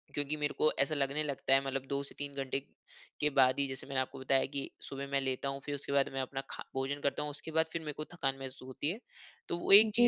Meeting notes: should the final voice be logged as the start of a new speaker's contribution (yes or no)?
no